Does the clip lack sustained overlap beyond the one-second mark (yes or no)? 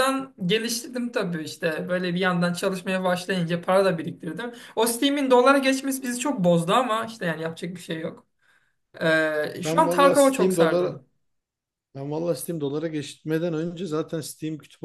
no